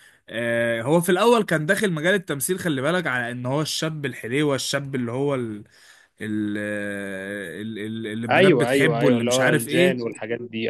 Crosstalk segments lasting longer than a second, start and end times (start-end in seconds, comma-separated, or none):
8.3-10.1